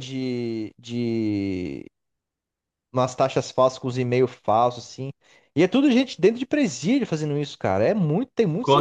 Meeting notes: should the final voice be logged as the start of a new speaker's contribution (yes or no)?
yes